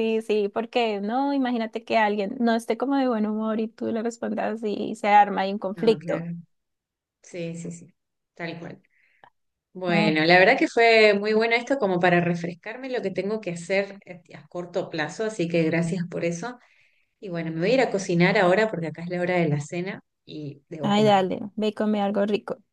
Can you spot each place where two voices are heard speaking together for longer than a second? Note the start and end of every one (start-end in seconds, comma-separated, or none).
none